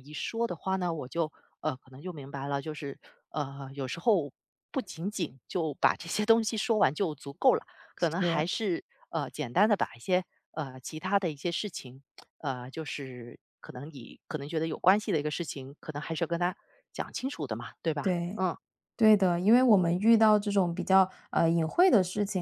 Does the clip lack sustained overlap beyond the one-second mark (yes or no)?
yes